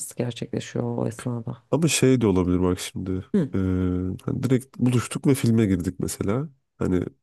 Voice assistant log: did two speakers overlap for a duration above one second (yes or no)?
no